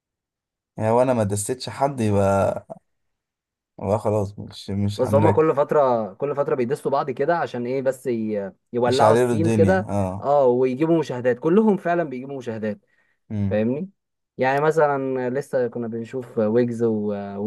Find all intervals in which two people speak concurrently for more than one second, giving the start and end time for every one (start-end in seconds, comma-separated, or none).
8.9-10.3